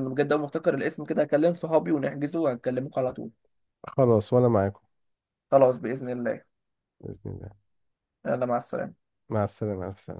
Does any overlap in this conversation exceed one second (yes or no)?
no